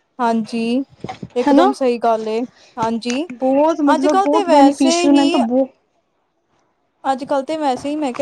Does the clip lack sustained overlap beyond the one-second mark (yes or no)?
no